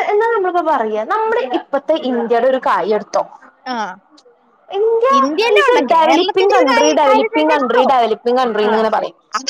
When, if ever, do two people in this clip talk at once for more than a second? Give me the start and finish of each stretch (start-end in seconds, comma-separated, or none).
5.6-7.8